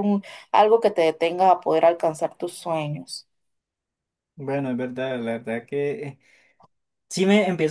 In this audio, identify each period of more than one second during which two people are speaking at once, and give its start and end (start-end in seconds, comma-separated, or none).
none